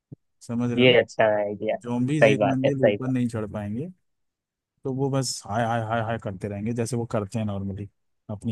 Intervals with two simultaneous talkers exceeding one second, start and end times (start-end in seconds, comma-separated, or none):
1.8-3.1